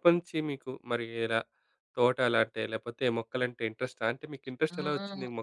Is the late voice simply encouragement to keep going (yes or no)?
no